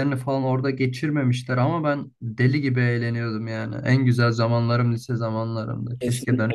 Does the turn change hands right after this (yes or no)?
yes